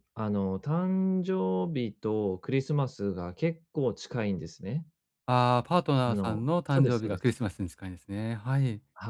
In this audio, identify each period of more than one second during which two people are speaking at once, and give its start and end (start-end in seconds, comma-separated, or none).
6.1-7.4